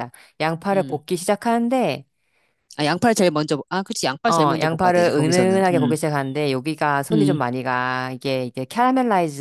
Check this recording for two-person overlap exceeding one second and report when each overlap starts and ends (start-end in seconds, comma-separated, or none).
4.3-5.9